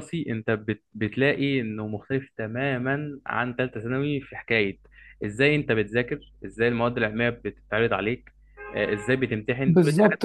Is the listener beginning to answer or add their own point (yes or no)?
yes